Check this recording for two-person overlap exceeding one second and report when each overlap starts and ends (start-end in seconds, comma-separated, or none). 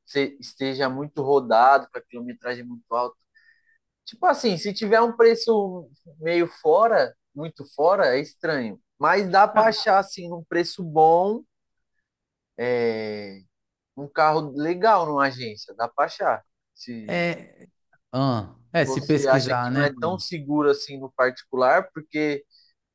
18.8-20.2